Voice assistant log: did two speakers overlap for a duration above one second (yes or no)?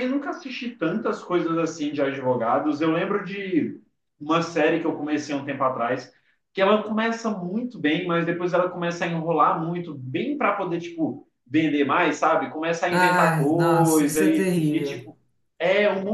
yes